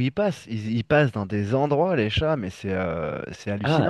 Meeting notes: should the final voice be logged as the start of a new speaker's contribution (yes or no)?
yes